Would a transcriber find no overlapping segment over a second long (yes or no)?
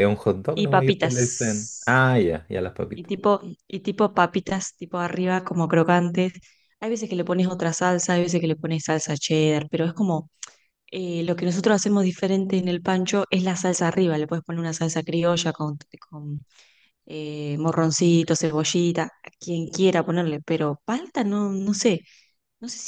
no